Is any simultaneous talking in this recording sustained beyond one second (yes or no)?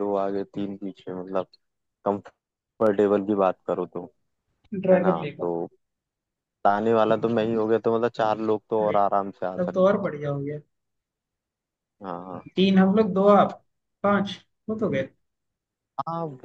no